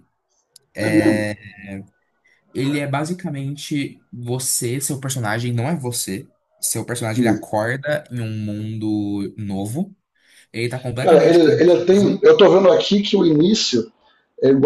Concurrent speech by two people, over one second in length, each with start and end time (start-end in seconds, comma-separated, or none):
11.0-12.2